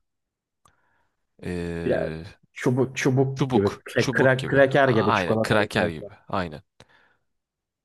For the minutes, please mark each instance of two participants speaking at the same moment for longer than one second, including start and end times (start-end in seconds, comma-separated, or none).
3.4-6.1